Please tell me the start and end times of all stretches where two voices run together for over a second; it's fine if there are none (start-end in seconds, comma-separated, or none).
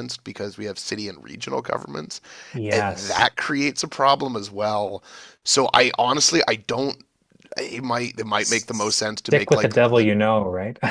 8.4-10.1